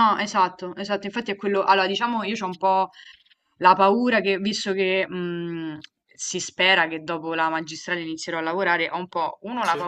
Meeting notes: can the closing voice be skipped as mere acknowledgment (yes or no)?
yes